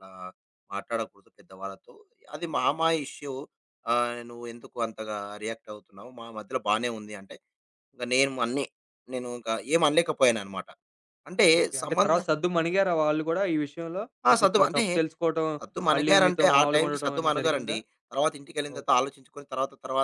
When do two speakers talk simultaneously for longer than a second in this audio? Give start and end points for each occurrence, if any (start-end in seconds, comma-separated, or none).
15.9-17.8